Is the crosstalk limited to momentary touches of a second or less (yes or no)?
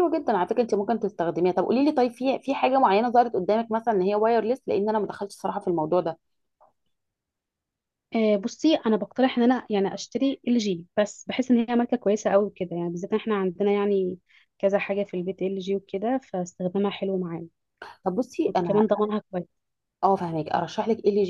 yes